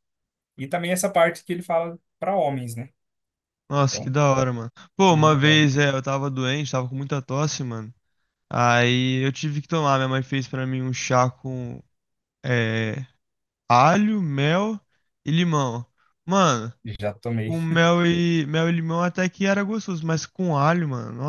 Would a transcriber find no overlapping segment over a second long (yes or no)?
yes